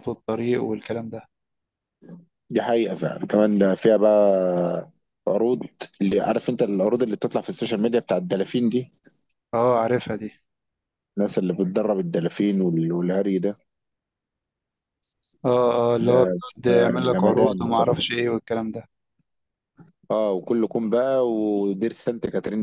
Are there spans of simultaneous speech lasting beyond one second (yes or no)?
yes